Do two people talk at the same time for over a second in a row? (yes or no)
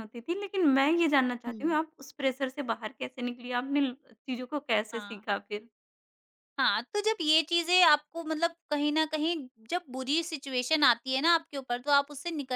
no